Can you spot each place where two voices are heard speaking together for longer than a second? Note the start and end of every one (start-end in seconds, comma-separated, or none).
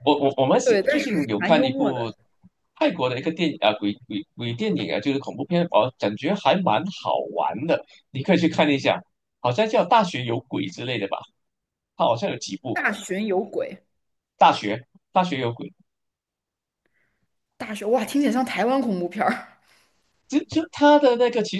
0.6-2.0